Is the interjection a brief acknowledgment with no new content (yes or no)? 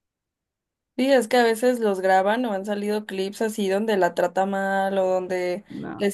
yes